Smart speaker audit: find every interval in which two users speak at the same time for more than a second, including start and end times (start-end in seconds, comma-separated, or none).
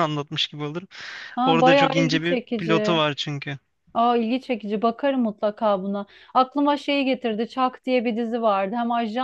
1.4-3.0